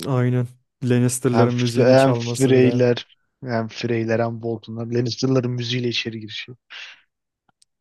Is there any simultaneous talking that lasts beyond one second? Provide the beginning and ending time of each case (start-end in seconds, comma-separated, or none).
1.3-2.8